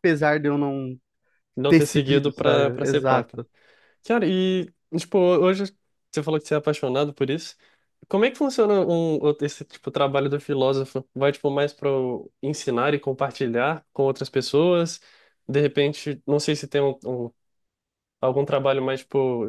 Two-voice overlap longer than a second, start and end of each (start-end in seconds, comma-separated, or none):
1.7-3.4